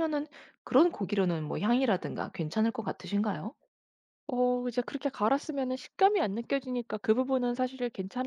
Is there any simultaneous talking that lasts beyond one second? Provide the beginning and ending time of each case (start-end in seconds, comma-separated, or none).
none